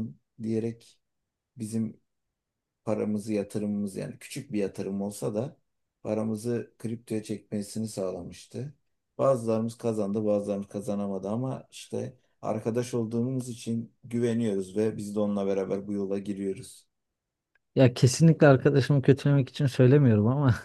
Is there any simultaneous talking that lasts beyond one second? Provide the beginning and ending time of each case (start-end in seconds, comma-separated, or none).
none